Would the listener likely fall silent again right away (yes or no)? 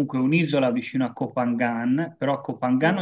yes